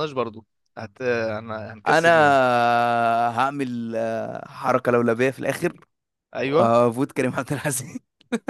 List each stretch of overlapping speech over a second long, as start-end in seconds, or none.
none